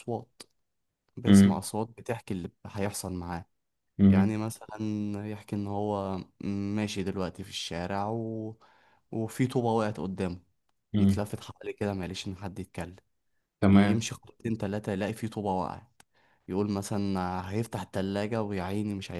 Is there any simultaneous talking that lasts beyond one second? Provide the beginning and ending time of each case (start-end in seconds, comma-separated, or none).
none